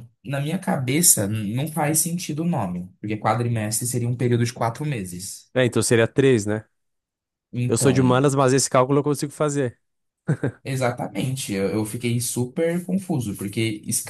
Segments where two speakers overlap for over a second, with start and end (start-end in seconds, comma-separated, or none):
none